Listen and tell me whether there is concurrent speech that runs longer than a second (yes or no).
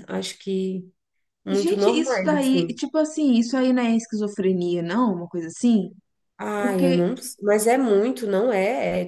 yes